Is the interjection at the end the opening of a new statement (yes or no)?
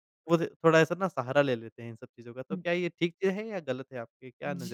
yes